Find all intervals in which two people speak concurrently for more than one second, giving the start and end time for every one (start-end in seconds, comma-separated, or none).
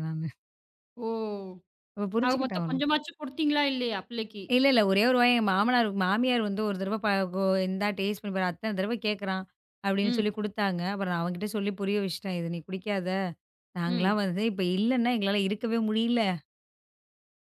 none